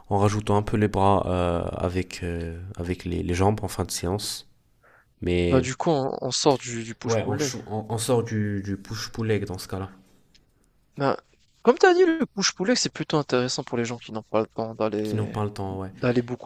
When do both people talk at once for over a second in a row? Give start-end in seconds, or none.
none